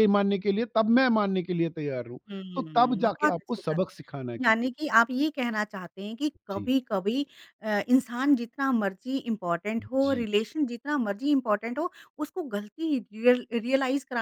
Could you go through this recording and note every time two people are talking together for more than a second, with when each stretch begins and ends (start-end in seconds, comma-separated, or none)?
2.5-4.9